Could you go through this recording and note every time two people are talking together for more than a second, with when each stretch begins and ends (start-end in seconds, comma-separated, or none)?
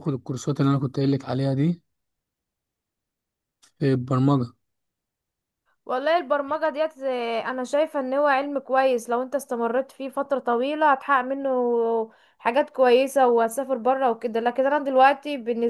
none